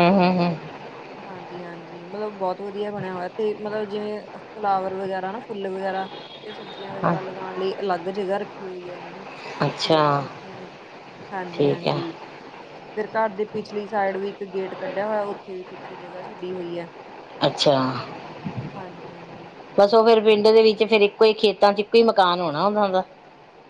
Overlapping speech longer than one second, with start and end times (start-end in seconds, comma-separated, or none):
none